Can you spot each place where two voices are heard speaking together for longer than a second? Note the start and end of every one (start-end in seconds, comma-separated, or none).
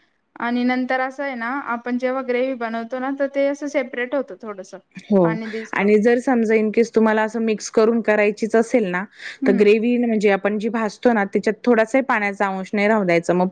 none